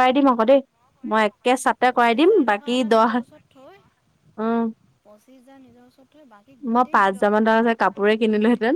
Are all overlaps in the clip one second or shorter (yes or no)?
no